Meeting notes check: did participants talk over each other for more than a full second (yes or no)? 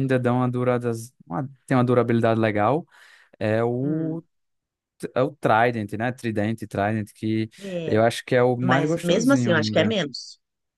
yes